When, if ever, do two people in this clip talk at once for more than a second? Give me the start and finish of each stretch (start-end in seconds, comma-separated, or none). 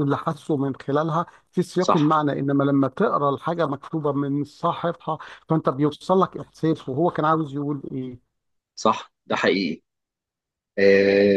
none